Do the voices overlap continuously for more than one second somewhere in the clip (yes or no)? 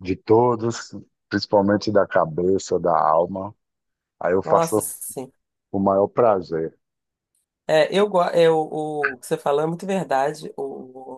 no